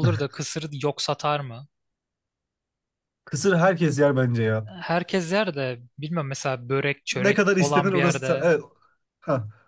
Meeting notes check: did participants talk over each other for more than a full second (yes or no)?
yes